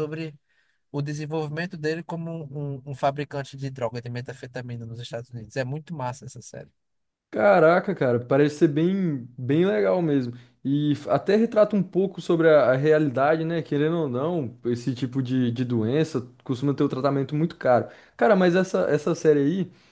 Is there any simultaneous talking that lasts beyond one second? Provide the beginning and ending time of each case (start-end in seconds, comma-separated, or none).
none